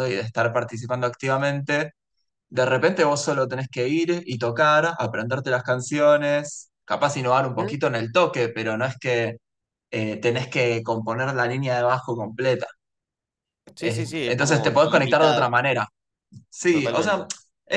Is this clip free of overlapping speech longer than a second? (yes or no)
no